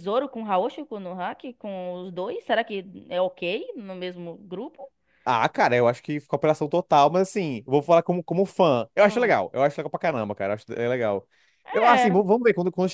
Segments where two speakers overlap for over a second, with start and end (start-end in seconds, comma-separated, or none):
none